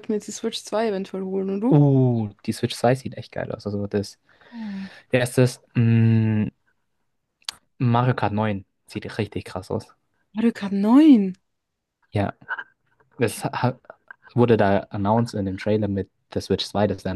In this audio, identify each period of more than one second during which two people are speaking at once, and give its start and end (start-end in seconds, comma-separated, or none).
none